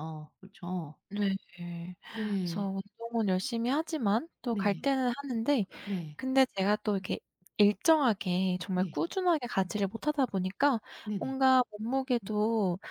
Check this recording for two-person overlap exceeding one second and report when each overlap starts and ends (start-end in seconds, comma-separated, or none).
none